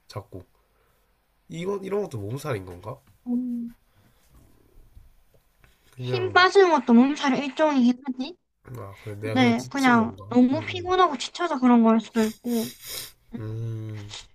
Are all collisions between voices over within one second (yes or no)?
no